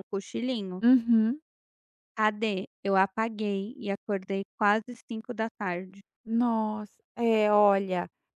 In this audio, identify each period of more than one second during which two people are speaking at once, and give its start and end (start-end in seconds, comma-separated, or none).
none